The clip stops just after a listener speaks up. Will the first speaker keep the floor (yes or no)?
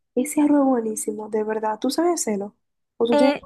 no